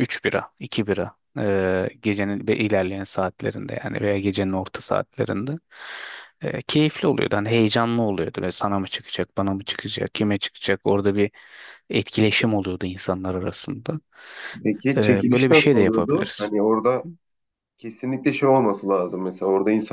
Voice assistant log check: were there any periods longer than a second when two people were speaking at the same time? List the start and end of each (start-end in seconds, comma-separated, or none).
15.0-16.5